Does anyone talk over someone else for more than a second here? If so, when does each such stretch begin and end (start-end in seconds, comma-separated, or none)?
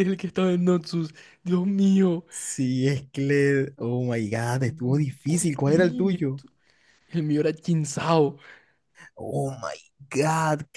4.7-6.4